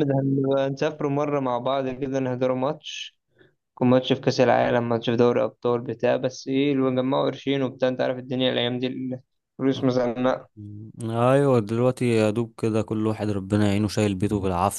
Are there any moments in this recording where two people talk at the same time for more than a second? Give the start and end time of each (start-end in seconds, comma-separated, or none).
none